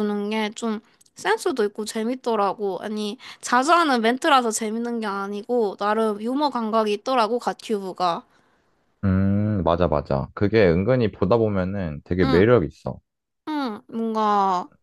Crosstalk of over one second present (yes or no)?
no